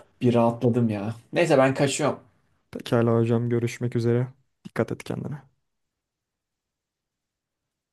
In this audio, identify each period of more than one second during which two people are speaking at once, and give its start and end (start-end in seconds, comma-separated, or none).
none